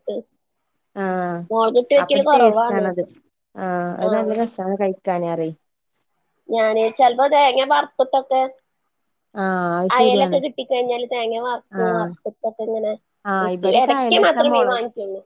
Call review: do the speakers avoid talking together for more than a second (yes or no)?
yes